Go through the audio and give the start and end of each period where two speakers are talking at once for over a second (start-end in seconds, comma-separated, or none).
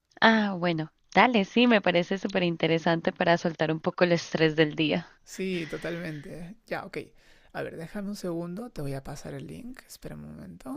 none